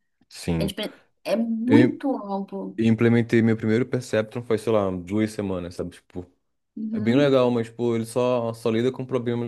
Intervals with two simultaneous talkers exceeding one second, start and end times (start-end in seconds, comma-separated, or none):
none